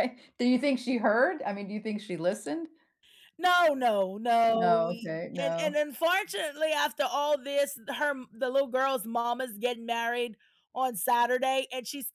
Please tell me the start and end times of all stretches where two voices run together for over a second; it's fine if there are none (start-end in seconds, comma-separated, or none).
4.5-5.8